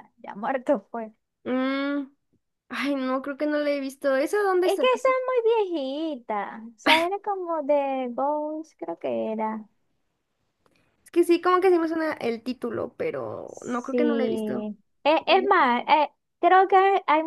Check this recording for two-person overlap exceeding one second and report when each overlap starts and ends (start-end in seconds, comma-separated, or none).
13.5-14.7